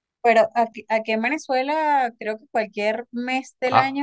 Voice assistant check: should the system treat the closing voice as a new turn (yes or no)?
no